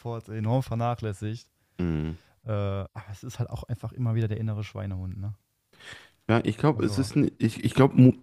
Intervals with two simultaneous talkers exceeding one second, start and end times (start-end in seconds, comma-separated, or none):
none